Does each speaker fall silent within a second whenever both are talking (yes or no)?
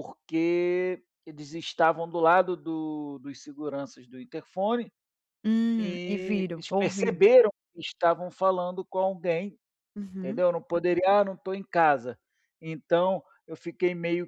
no